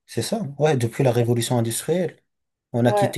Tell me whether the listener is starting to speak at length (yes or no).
no